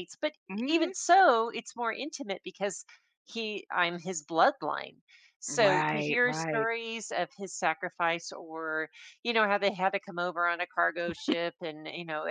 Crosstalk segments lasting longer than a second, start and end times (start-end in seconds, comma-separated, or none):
5.5-6.7